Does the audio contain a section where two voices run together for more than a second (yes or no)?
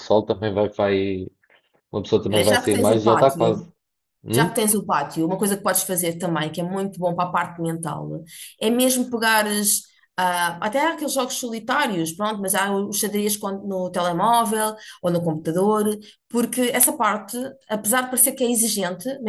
yes